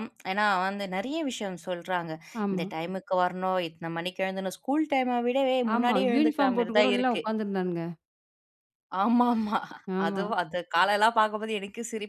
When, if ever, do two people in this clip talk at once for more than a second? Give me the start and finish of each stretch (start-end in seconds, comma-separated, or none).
5.7-7.2